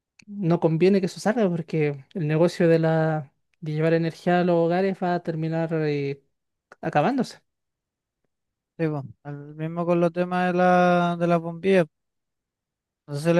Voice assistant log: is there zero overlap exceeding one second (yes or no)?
yes